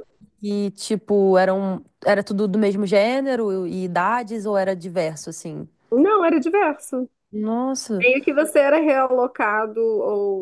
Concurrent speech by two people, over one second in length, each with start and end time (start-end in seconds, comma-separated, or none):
none